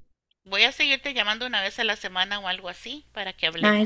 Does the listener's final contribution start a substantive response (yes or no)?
yes